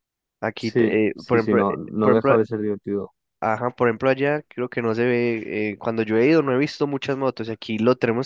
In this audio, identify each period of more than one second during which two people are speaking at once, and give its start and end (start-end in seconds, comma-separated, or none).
0.6-2.3